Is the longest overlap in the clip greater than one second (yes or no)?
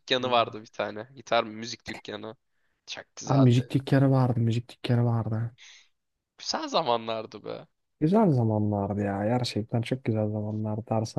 no